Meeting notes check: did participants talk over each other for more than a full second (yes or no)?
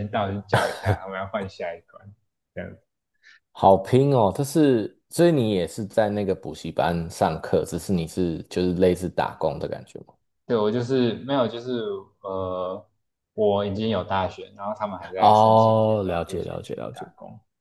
yes